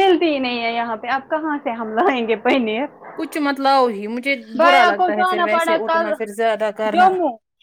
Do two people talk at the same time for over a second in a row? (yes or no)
yes